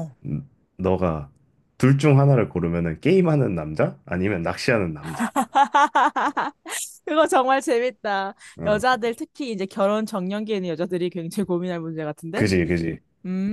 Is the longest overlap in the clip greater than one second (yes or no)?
no